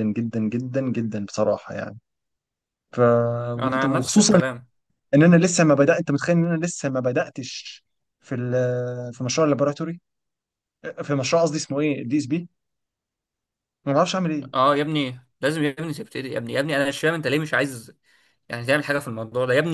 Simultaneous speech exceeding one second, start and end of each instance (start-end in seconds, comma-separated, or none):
none